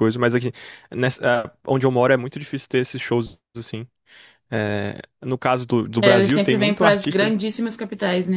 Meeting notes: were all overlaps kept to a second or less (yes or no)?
no